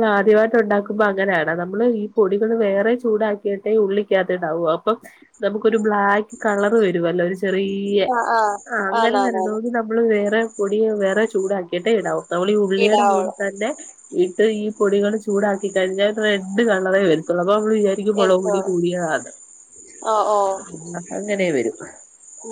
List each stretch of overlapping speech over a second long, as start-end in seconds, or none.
none